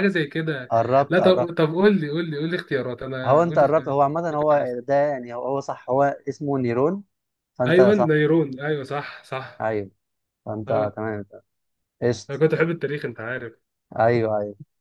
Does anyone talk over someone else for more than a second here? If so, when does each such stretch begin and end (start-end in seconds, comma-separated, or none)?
3.2-4.8